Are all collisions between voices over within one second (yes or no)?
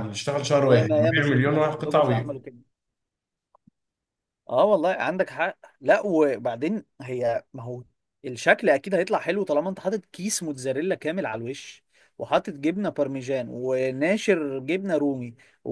no